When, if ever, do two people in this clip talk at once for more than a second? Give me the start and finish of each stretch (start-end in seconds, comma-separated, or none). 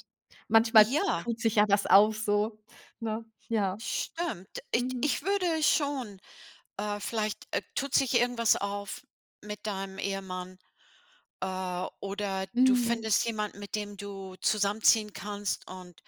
none